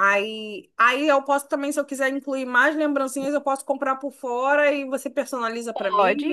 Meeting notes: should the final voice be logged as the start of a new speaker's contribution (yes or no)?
no